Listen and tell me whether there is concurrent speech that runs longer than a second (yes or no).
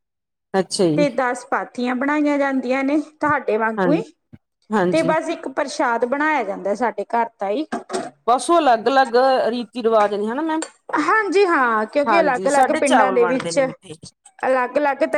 yes